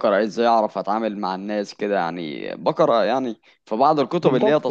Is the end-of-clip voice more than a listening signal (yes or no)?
yes